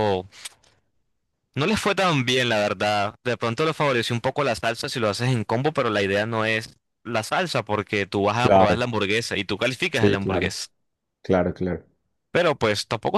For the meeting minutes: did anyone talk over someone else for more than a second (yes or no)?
no